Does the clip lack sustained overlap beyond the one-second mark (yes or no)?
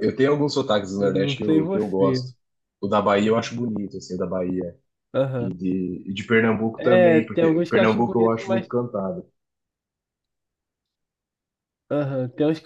no